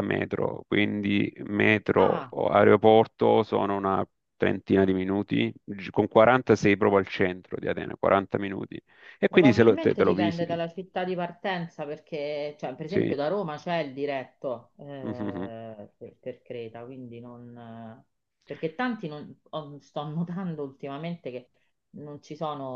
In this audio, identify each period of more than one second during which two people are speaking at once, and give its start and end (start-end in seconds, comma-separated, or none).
9.3-10.6